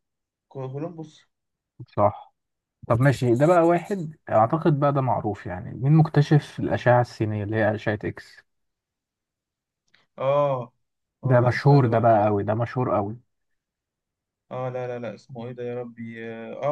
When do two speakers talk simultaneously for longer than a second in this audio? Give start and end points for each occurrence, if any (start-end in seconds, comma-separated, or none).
11.2-12.4